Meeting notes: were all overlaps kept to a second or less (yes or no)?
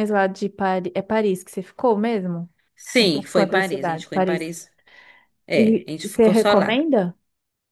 no